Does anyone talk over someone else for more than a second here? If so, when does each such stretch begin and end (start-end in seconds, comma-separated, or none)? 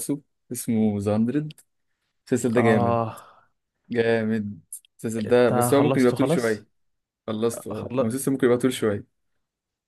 5.2-6.7